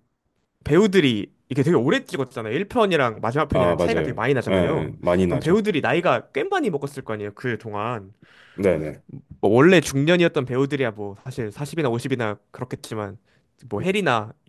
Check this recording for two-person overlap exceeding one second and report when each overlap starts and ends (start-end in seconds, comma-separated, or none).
3.5-5.6